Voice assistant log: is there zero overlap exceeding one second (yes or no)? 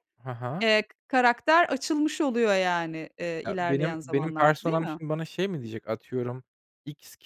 no